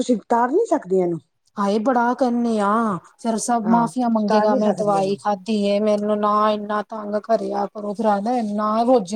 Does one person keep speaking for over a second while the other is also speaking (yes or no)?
yes